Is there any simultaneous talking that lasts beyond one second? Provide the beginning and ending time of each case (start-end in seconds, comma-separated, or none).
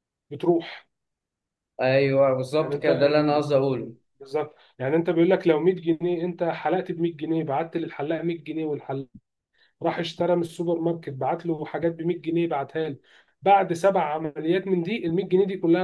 2.6-3.9